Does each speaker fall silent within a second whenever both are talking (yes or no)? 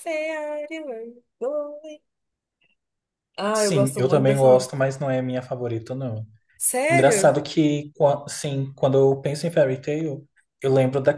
no